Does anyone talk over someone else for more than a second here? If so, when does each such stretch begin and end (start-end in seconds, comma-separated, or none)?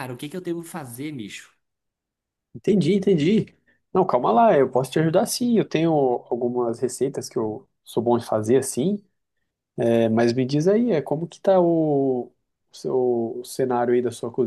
none